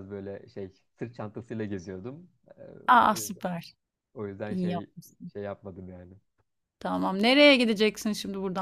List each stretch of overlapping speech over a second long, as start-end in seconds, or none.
none